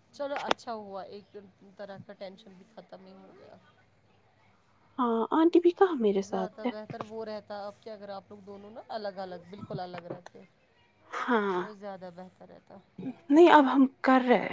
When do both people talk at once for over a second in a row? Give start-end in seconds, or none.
none